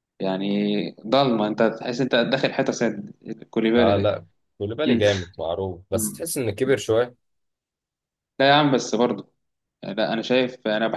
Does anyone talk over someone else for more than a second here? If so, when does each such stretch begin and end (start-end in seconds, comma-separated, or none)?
none